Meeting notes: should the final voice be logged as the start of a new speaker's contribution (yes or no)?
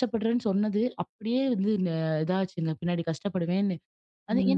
yes